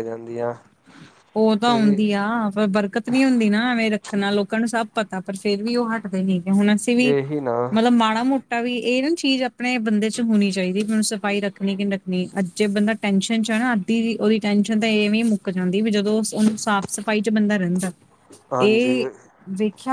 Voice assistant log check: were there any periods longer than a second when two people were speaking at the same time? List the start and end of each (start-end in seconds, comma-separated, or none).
none